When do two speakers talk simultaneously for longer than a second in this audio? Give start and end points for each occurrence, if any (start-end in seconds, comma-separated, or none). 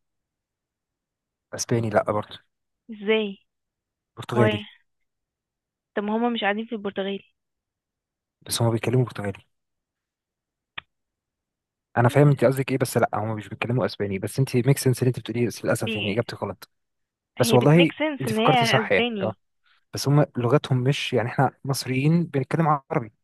17.4-19.3